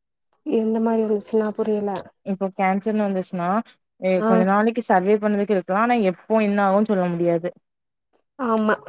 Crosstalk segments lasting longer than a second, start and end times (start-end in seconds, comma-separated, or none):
none